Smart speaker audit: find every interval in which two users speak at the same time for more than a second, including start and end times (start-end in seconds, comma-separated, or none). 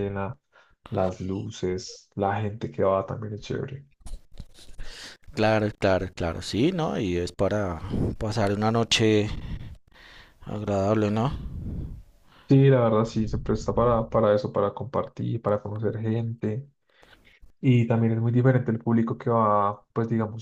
none